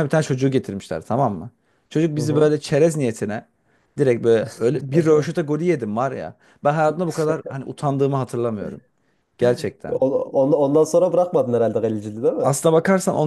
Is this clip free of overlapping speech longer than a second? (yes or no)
yes